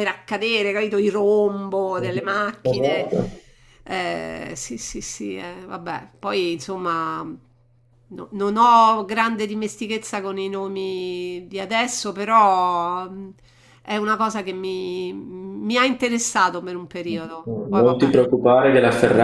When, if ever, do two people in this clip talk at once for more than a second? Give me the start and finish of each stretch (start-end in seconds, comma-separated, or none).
none